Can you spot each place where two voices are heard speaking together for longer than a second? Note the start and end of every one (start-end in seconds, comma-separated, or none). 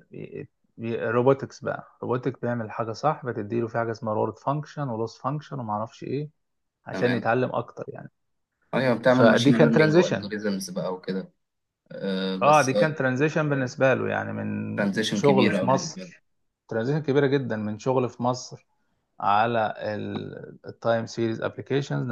9.0-10.3, 14.8-16.1